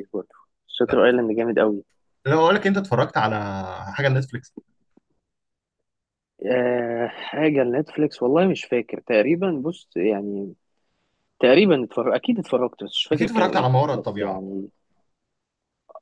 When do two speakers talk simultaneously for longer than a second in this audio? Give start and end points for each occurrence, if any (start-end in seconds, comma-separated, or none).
13.1-14.4